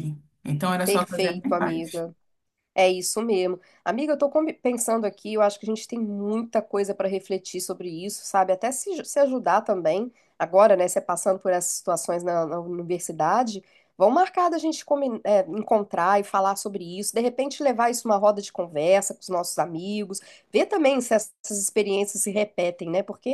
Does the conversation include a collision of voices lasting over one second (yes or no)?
yes